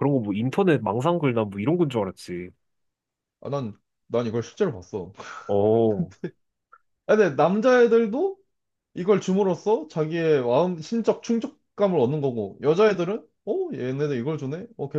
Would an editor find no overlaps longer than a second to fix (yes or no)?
yes